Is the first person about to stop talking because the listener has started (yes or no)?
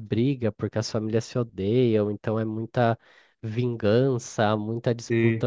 no